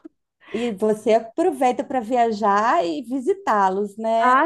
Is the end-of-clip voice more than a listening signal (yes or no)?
yes